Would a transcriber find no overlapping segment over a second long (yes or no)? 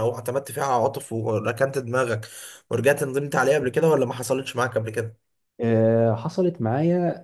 yes